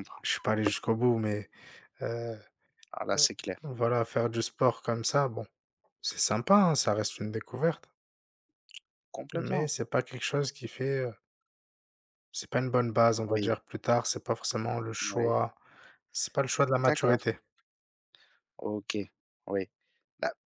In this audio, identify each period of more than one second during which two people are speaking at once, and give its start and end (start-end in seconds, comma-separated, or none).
none